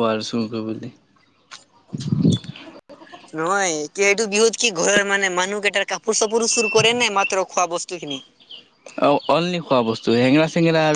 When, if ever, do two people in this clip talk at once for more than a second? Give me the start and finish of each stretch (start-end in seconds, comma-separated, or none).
none